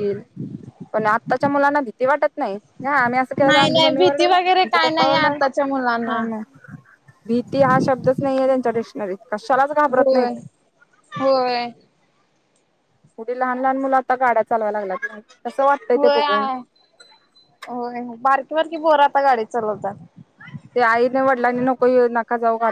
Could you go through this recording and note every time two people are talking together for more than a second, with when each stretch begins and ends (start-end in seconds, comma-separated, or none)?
3.5-5.4